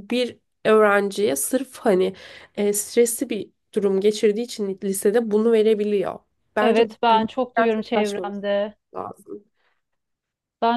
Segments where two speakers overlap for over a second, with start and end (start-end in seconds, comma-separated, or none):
6.6-8.4